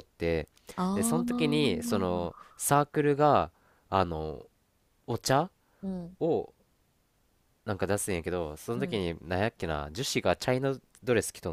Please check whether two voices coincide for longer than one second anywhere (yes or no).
yes